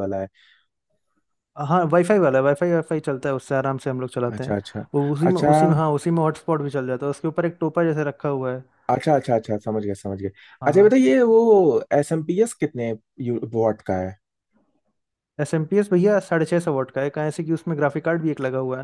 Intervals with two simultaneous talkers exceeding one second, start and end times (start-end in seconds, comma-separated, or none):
none